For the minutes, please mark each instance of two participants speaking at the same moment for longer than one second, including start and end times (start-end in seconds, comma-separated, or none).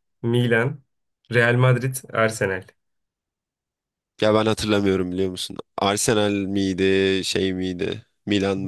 none